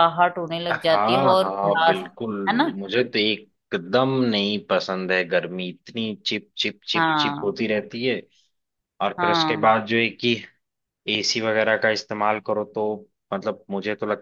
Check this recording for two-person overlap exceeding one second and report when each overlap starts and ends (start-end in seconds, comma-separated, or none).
0.7-2.1